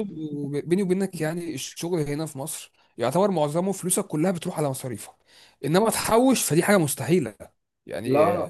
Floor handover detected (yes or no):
no